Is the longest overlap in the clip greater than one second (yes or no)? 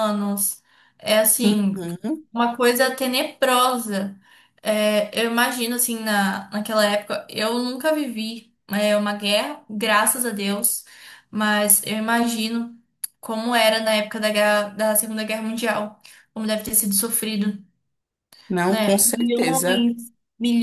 yes